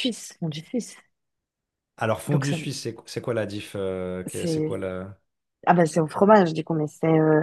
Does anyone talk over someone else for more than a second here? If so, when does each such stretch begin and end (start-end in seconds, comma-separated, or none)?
none